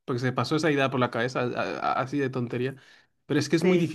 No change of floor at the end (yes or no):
yes